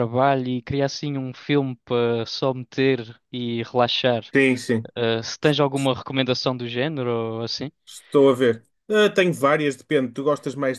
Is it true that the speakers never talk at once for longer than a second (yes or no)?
yes